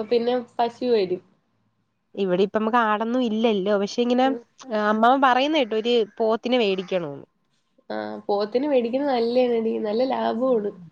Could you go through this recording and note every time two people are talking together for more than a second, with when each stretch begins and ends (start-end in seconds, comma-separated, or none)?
none